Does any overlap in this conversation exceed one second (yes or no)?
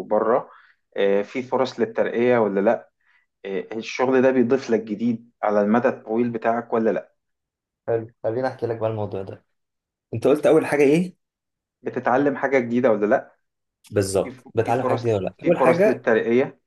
yes